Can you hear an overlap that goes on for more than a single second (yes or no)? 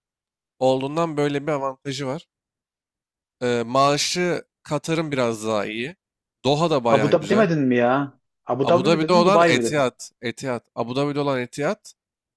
yes